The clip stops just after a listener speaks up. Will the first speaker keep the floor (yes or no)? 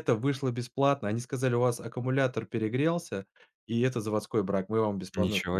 no